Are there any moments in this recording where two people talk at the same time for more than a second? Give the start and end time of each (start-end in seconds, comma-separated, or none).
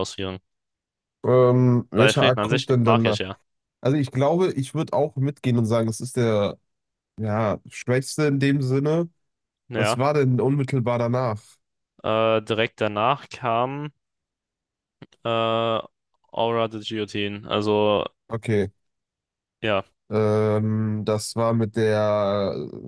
2.0-3.2